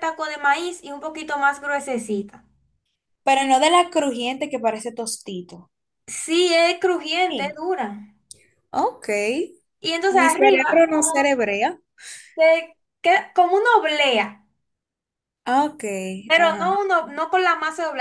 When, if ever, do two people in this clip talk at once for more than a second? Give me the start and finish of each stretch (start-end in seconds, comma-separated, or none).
10.1-11.3